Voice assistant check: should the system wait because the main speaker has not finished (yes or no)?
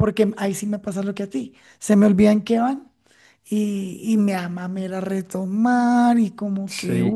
no